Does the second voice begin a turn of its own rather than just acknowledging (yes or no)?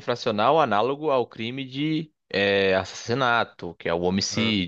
no